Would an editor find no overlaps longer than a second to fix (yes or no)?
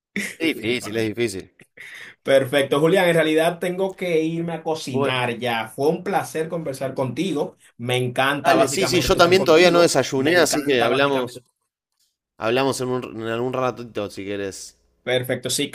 no